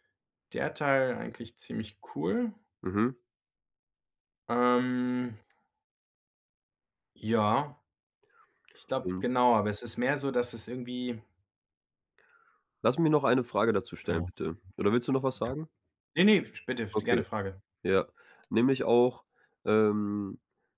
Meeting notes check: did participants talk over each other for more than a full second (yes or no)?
no